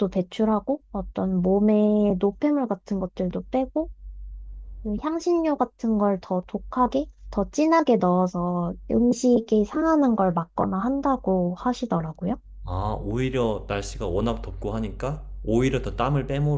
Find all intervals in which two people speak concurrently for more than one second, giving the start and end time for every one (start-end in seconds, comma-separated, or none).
none